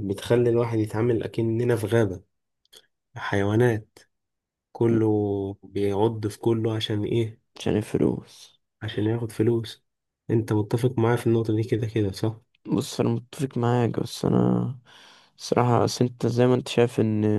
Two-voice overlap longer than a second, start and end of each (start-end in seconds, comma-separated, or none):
none